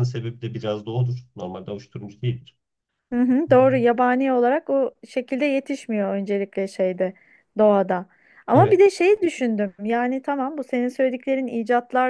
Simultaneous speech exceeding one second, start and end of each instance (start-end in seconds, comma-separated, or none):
none